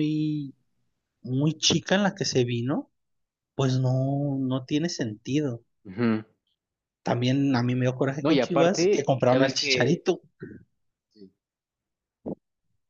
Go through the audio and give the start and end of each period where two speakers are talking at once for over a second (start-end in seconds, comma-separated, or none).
8.2-10.1